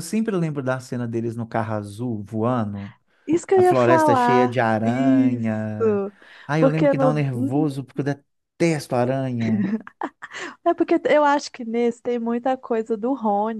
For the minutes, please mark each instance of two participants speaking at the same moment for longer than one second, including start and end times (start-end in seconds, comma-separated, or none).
3.5-5.7, 6.6-7.9